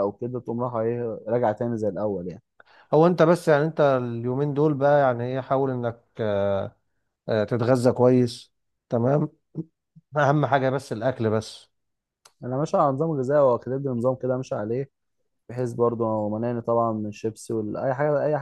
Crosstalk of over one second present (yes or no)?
no